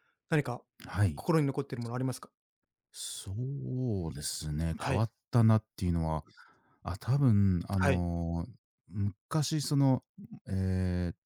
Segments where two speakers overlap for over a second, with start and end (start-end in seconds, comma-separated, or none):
none